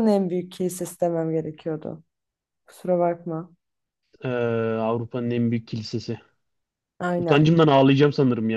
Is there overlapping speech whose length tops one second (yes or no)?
no